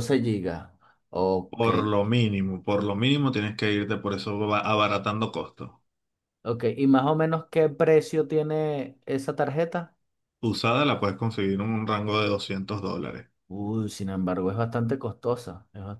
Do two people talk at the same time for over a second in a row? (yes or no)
no